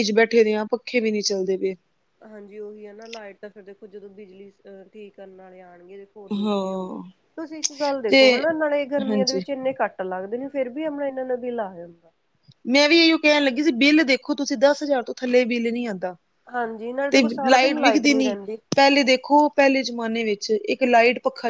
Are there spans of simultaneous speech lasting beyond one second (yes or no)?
no